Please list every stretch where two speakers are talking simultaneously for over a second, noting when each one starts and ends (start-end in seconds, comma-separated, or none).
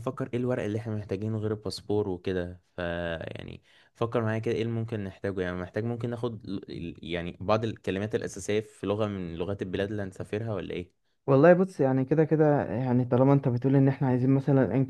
none